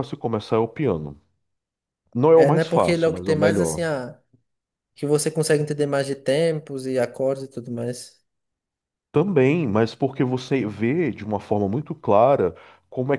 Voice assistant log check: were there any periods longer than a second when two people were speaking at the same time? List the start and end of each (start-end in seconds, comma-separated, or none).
2.4-3.9